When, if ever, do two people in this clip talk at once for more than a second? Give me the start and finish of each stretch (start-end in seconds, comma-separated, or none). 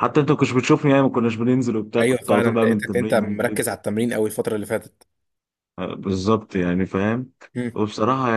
2.0-3.7